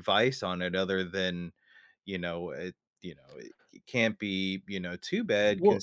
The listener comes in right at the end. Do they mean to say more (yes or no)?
no